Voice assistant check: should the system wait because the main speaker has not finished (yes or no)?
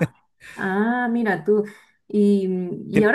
yes